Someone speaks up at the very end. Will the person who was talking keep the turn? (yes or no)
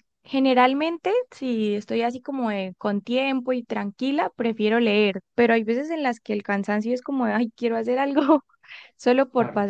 yes